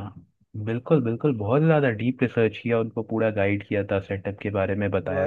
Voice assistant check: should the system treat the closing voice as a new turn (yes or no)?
no